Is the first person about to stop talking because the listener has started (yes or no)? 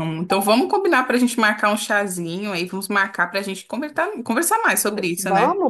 yes